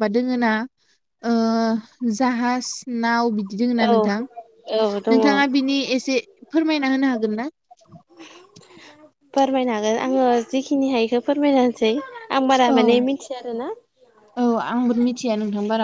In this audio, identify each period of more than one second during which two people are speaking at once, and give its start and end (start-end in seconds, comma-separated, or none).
3.9-5.2